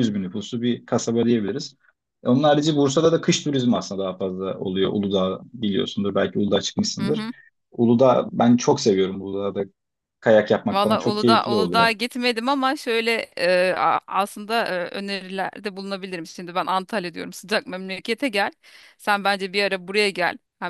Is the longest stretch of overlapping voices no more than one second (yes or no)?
no